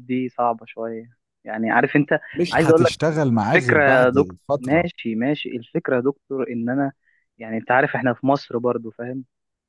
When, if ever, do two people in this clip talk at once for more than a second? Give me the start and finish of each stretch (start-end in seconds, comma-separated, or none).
3.5-4.9